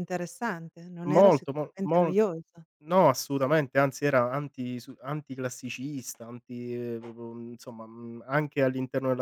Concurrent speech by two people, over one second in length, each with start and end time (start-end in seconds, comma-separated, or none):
1.0-2.2